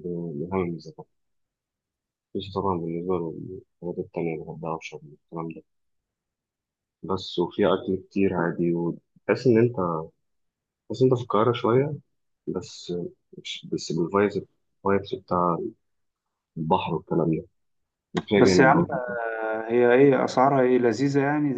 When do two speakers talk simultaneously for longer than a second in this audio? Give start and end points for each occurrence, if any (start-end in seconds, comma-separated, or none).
none